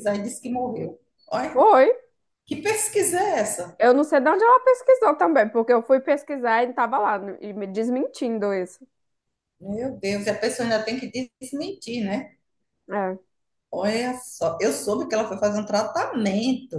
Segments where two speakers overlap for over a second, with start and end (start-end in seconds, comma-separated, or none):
none